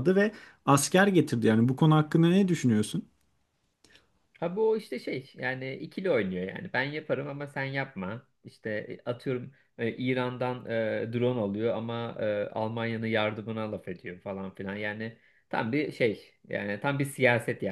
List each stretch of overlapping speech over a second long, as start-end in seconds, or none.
none